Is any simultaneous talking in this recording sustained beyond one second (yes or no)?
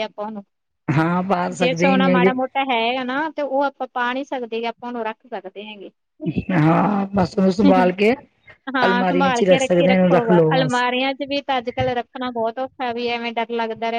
yes